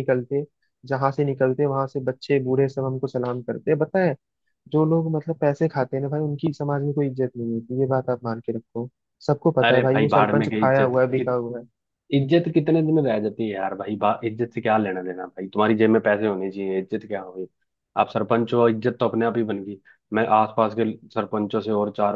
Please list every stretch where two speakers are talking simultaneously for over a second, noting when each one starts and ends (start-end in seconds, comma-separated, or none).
9.6-10.9